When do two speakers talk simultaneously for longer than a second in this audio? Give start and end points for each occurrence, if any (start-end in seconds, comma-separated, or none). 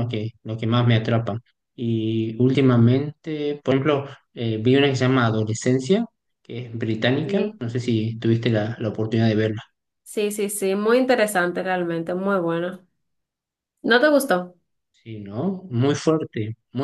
none